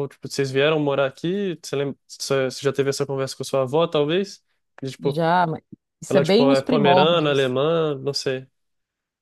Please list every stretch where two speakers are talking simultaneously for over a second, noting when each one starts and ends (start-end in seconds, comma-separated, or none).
6.1-7.5